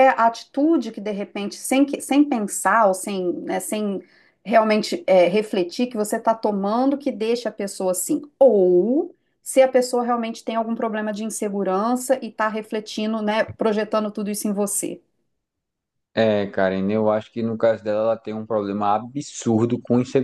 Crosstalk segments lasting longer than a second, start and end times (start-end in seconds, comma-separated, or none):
none